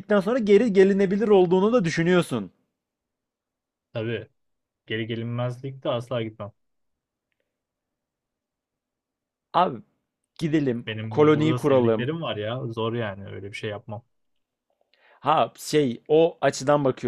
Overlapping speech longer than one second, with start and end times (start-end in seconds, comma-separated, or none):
10.9-12.1